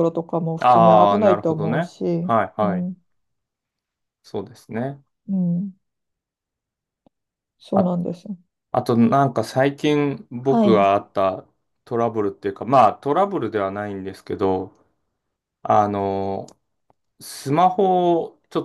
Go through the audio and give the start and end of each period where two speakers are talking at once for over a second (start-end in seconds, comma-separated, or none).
0.6-2.9